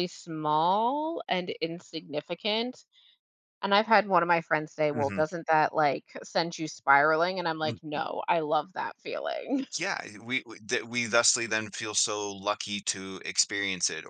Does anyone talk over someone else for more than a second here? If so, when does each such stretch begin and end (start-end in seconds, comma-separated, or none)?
none